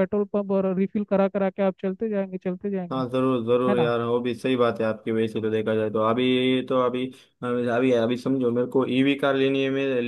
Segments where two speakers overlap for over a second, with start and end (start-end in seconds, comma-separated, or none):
none